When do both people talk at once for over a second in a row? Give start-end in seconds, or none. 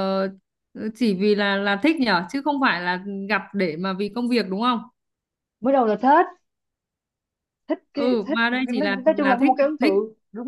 7.9-9.9